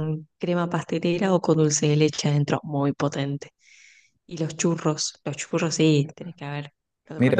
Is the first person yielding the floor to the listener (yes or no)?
yes